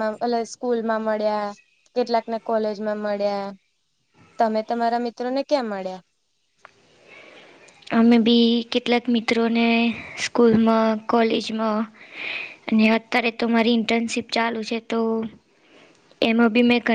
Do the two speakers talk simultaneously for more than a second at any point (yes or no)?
no